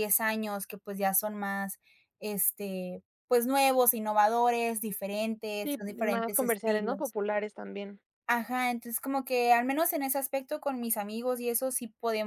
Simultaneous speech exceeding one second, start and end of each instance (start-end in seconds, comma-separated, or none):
5.6-7.2